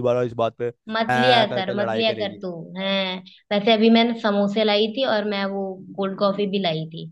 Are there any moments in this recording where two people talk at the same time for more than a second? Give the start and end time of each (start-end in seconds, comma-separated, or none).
0.9-2.4